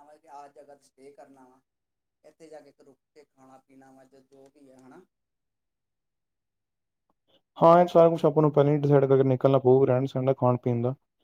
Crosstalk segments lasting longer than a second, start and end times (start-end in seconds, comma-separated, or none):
none